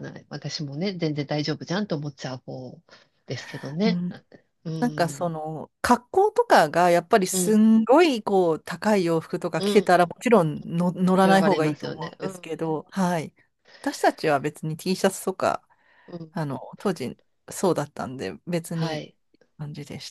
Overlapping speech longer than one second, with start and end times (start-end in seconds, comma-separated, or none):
11.2-12.5